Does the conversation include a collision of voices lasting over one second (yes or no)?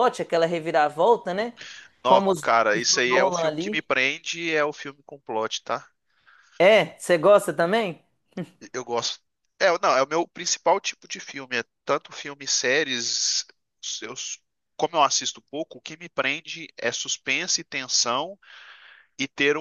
yes